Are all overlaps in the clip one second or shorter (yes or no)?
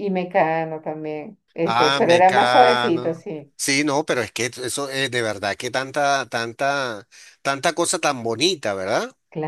no